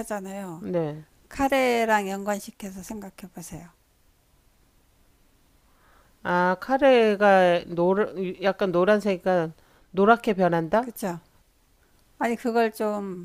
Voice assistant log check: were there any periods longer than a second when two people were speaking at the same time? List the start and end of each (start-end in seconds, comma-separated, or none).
none